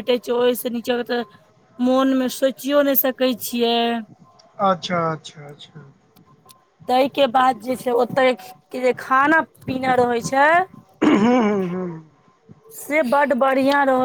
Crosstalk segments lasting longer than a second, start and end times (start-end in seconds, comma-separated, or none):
none